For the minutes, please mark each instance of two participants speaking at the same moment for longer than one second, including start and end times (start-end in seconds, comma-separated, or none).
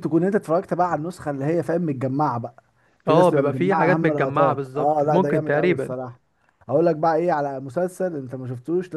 3.1-6.0